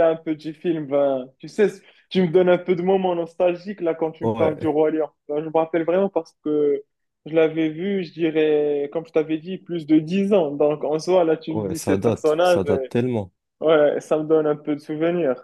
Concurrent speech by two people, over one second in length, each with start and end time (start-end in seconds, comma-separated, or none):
11.5-12.9